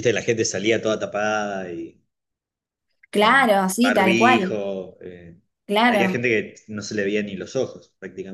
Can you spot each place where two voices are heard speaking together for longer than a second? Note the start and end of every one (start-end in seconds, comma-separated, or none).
3.2-4.6